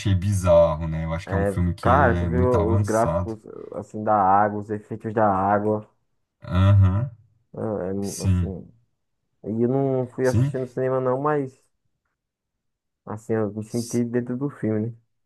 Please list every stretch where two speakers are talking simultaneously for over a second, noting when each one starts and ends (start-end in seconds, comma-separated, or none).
1.3-3.3